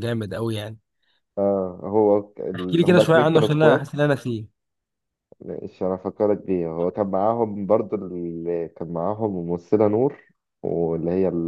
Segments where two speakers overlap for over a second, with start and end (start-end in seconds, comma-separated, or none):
2.5-3.9